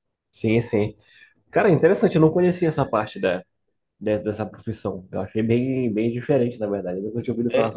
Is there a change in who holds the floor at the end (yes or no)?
yes